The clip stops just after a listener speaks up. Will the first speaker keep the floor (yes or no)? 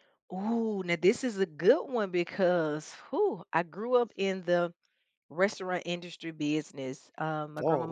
yes